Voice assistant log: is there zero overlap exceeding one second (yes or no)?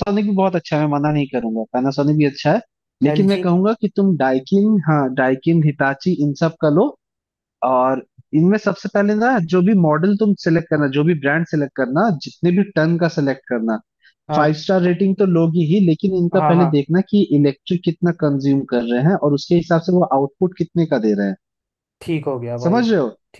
yes